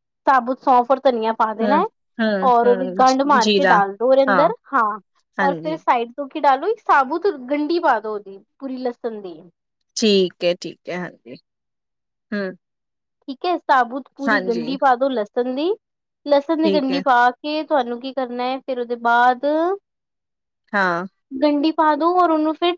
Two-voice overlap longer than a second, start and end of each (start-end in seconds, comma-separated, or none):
2.5-3.8